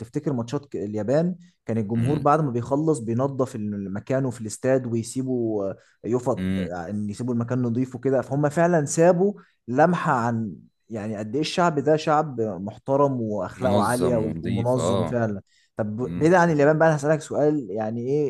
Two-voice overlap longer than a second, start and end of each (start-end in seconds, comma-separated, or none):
13.6-15.2